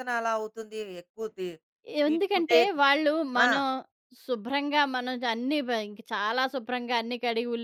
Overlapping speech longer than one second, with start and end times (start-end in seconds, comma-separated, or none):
none